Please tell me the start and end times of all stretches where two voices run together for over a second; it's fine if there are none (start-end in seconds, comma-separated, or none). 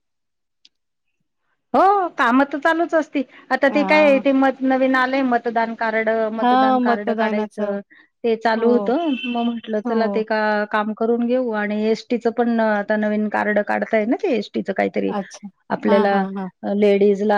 6.4-7.8